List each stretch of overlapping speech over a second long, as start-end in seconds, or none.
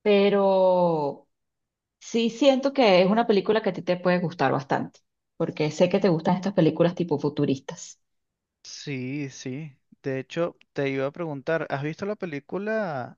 none